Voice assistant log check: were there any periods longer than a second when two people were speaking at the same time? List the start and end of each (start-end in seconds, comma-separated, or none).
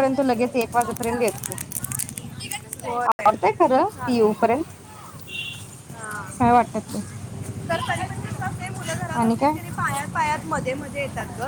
3.1-4.3